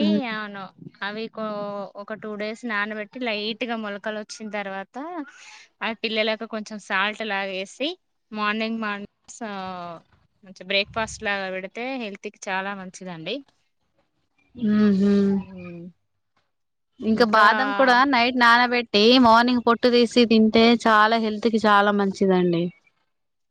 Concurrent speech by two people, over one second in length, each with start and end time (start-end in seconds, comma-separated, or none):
none